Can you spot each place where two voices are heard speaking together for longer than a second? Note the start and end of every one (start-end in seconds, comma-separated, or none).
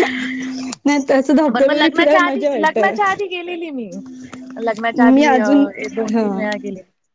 1.5-3.2